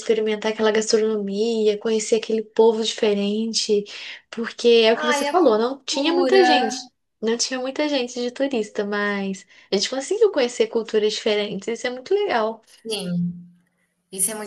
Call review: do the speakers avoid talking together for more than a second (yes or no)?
no